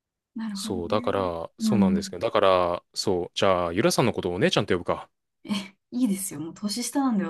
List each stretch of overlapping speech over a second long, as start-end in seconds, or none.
0.5-2.2